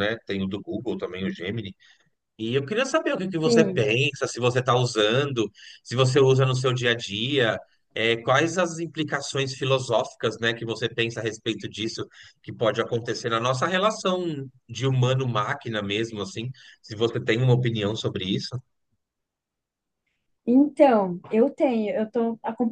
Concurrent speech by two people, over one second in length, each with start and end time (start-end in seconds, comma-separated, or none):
none